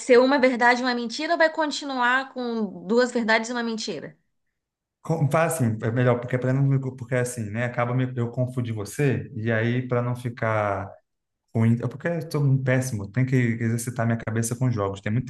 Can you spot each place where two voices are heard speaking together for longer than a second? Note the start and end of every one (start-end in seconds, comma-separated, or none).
none